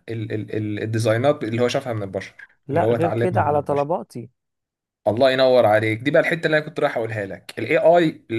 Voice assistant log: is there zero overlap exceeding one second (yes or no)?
no